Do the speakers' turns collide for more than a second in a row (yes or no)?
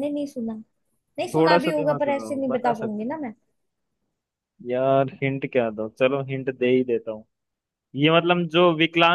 yes